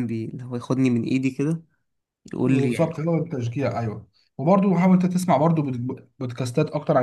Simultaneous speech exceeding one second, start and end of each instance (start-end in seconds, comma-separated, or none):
none